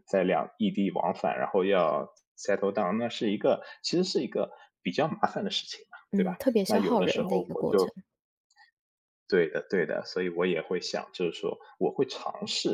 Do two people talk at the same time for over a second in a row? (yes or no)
yes